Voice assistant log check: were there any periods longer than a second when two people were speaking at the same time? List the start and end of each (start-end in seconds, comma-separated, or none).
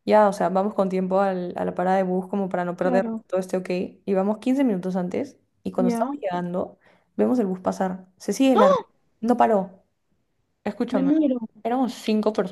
none